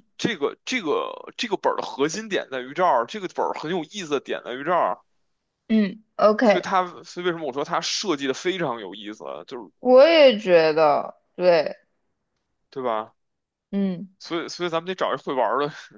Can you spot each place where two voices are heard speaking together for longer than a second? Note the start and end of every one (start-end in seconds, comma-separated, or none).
none